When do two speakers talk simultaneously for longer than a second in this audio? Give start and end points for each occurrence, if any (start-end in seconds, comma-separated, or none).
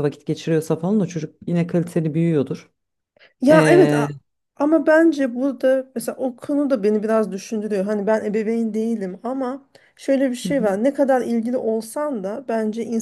none